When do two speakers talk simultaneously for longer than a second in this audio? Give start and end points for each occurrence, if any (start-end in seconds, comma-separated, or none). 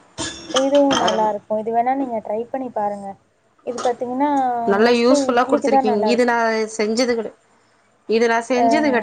4.8-6.4